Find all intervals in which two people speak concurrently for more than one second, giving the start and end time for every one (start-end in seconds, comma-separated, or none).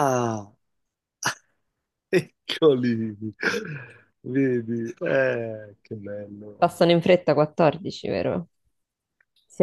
none